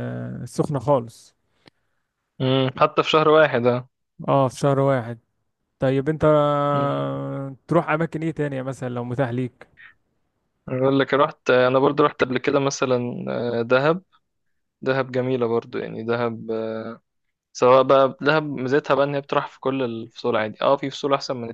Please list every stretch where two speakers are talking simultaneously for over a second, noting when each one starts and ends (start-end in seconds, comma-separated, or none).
none